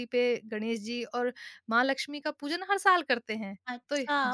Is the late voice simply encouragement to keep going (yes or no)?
no